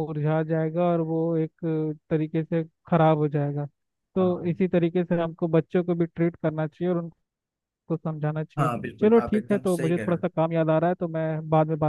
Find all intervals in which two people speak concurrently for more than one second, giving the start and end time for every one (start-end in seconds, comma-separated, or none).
8.6-10.2